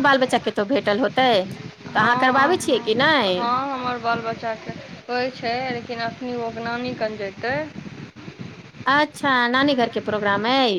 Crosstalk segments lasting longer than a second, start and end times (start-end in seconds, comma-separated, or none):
1.9-3.3